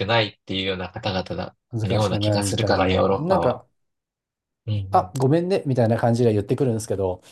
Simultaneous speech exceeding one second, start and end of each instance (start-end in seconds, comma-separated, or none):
1.7-3.6